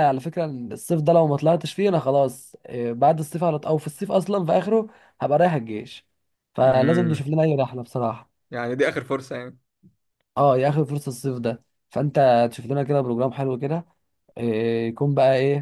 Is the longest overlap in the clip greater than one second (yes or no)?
no